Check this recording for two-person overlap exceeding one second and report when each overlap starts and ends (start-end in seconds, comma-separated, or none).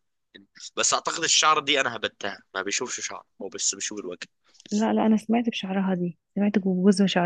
none